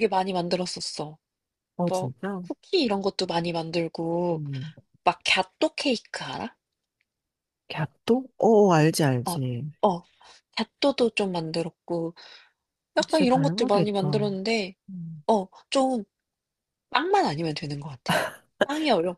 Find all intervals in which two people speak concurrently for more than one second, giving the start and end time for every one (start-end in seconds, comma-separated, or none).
13.1-14.3